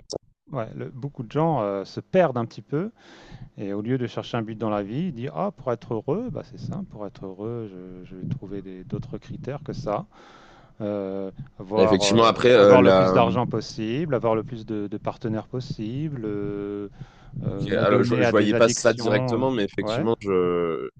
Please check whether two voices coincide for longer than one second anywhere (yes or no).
yes